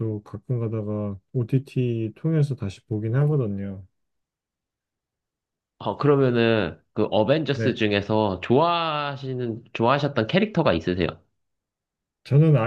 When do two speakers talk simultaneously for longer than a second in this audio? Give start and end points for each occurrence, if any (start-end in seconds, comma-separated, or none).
none